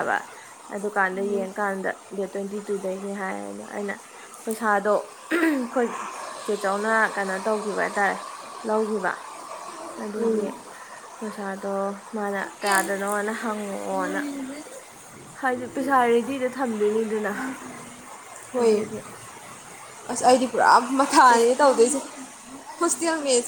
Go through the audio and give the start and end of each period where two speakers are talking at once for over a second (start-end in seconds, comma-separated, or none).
none